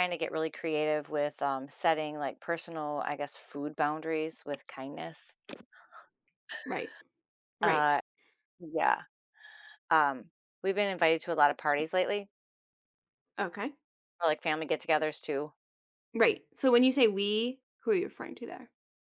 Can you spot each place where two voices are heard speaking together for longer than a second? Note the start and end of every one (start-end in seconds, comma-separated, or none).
none